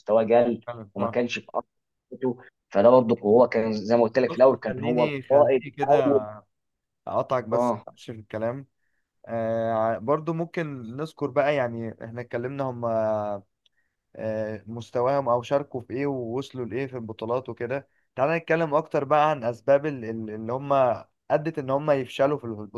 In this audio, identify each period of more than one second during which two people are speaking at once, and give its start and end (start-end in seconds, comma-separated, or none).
4.3-6.2